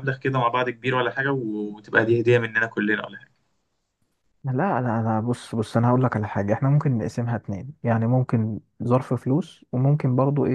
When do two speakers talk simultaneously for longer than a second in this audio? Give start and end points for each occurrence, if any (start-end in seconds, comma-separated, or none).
none